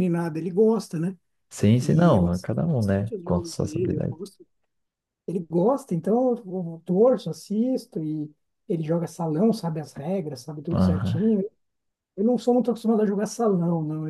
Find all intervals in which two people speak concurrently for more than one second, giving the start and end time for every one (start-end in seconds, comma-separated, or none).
1.8-4.2